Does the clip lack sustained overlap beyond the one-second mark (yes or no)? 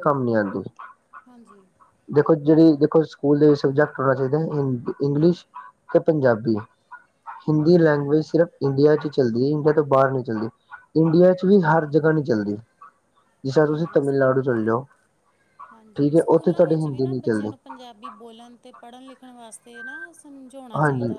no